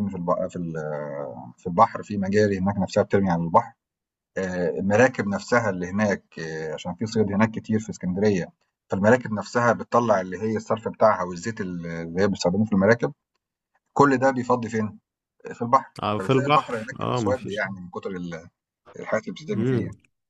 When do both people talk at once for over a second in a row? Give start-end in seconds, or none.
16.0-17.6